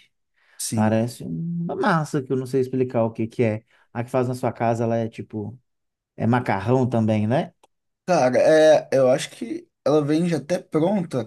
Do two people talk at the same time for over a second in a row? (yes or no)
no